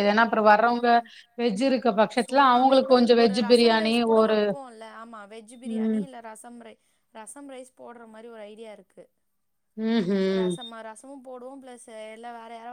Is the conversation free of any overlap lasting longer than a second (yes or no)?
no